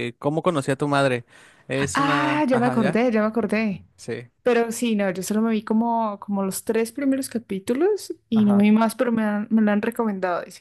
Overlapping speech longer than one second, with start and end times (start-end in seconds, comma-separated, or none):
1.7-3.0